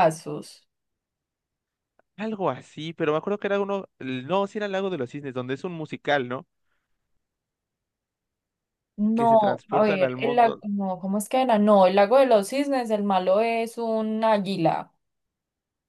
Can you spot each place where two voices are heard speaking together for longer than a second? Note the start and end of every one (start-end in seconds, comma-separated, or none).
9.1-10.6